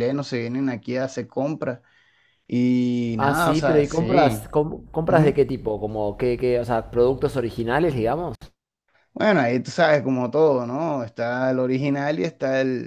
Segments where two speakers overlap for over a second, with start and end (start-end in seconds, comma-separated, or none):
3.2-4.4